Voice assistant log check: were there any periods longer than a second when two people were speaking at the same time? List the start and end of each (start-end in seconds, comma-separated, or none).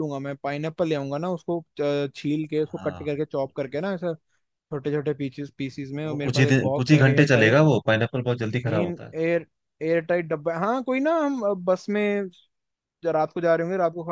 6.0-7.6